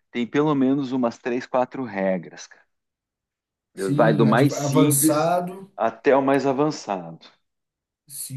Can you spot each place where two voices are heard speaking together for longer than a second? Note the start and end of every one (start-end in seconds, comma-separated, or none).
4.0-5.3